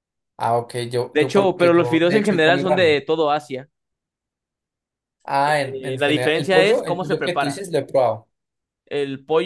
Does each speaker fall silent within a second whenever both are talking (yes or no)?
no